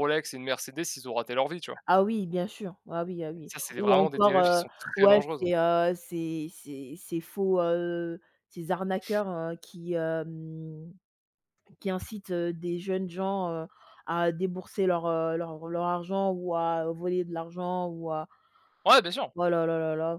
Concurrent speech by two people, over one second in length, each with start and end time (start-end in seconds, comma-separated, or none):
3.5-5.4